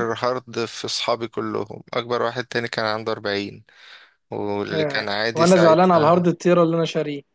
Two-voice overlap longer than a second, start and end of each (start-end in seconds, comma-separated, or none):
4.7-6.3